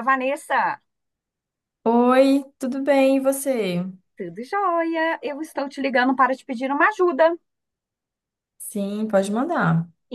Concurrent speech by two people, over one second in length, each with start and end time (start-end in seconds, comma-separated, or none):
none